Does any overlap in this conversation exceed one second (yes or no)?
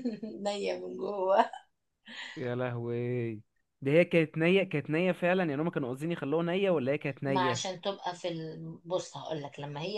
no